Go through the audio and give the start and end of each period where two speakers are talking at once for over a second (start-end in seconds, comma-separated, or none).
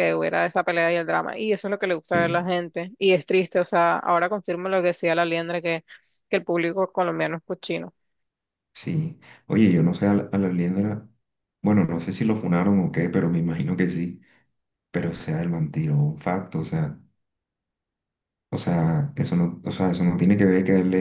none